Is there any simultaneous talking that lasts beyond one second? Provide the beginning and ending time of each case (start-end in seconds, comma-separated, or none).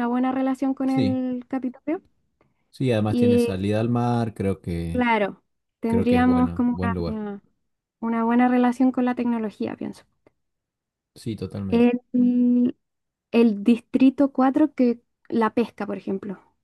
5.9-7.2